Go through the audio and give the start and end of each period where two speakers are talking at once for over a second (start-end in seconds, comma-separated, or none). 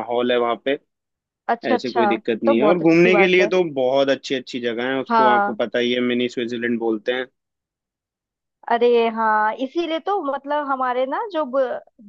1.7-3.5